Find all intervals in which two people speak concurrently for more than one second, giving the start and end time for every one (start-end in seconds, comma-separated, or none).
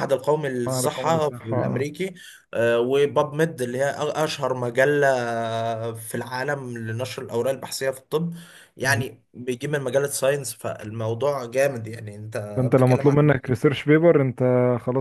0.7-1.9